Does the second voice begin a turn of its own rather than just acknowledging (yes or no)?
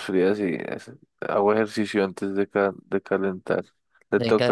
yes